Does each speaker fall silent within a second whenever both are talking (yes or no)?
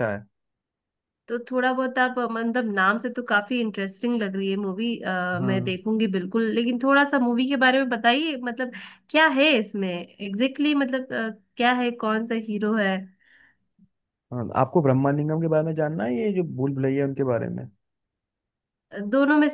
yes